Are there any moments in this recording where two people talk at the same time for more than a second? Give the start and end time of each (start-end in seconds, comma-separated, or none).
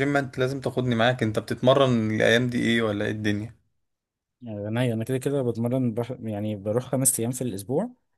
none